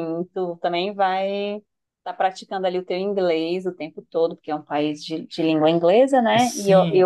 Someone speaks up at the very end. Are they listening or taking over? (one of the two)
taking over